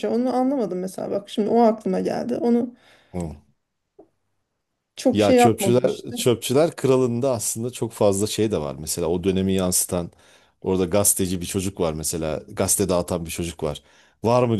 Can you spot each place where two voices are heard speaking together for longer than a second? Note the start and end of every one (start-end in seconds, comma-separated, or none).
5.1-6.3